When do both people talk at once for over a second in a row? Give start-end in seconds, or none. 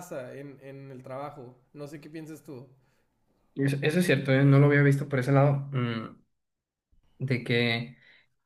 none